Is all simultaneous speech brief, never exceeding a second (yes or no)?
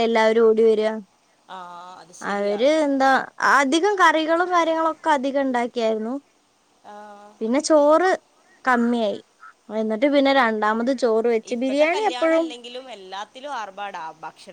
yes